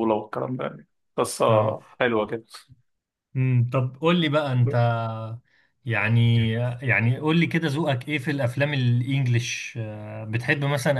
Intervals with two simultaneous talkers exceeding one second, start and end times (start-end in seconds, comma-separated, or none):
none